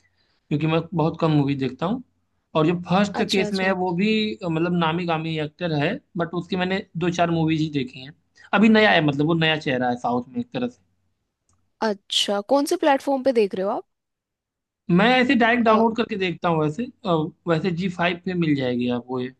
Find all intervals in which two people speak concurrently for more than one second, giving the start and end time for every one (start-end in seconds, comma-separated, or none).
none